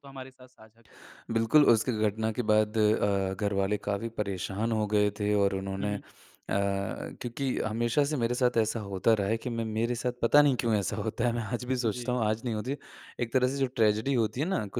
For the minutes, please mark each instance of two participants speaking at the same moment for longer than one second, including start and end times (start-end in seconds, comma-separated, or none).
none